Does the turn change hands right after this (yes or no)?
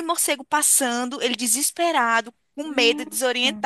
no